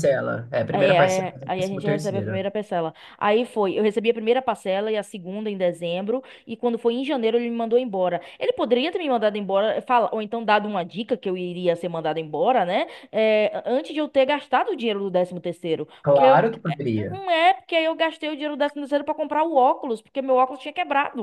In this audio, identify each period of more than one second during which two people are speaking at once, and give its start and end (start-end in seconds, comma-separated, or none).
0.8-2.4